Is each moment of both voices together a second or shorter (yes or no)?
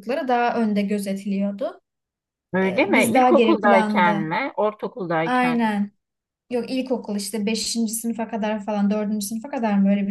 no